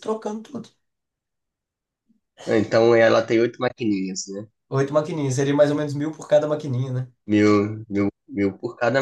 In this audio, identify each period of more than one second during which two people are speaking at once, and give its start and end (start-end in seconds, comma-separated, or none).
none